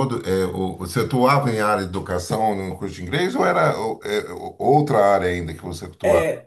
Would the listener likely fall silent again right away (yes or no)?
no